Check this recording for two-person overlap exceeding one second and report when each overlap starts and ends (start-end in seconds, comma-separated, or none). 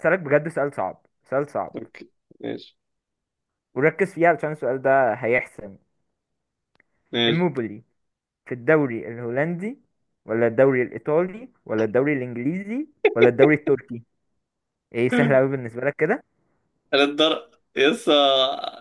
none